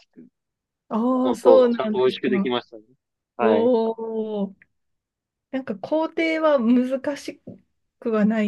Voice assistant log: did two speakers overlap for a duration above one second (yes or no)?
yes